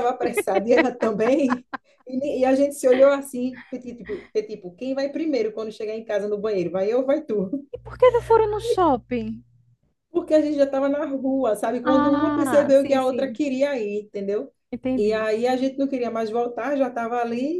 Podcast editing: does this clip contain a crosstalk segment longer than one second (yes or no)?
yes